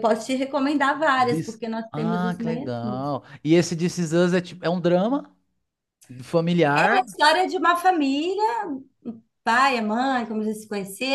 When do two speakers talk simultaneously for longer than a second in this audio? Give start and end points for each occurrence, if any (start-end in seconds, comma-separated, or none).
1.2-3.1